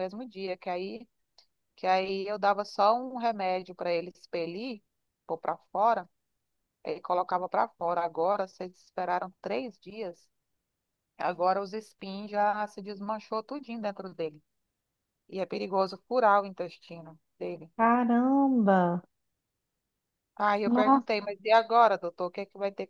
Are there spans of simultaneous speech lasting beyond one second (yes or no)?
no